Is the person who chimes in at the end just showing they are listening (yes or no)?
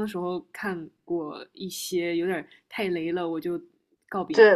no